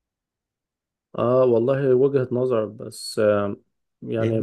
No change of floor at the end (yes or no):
yes